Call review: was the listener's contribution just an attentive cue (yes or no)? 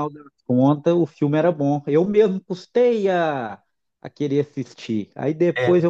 yes